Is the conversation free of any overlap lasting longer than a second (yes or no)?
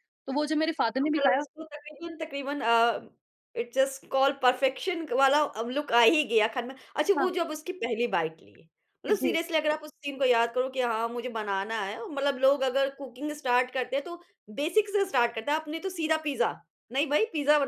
yes